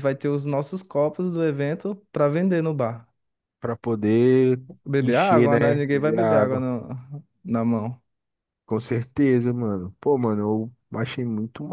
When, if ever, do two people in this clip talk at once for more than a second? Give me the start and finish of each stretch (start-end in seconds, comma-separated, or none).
5.0-6.6